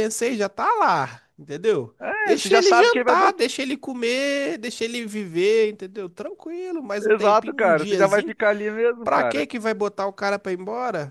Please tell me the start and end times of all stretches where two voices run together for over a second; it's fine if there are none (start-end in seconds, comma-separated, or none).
2.0-3.4, 7.0-8.3